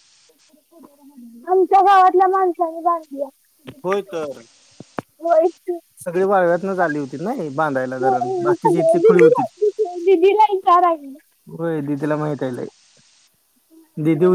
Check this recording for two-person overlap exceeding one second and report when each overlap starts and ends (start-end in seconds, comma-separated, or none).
8.0-9.4